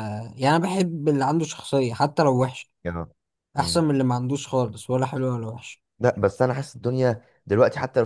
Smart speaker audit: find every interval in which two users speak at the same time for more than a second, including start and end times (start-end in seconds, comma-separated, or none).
none